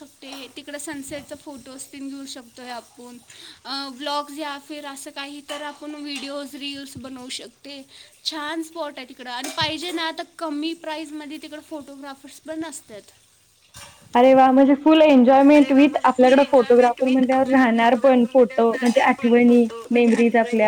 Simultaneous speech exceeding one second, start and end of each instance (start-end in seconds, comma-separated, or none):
15.6-19.1